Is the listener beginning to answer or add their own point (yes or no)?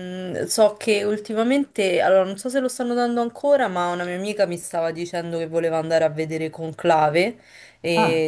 no